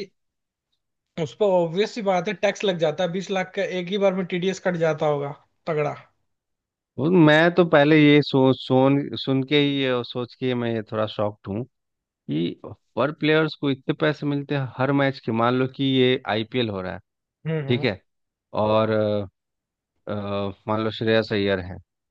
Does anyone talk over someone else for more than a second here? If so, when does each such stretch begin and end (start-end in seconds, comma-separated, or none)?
none